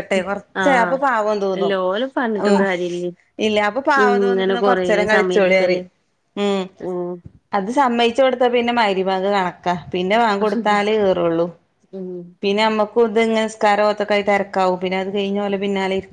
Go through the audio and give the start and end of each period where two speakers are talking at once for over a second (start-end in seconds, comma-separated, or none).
4.1-5.8